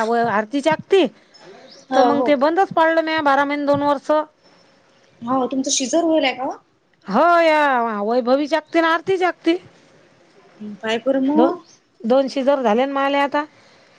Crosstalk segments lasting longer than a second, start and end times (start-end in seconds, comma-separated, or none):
none